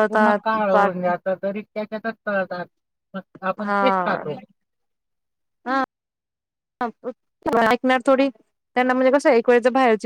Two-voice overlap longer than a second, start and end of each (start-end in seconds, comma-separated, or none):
none